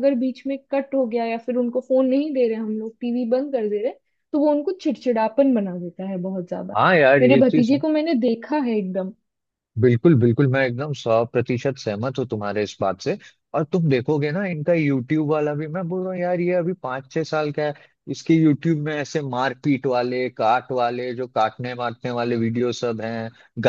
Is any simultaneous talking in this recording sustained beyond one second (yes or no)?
no